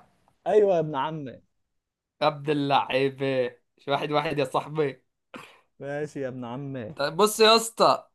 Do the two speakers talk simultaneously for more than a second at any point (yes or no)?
no